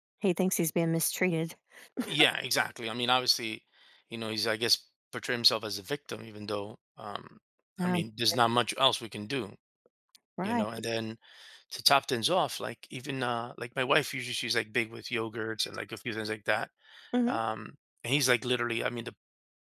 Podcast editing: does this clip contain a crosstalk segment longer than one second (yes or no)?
no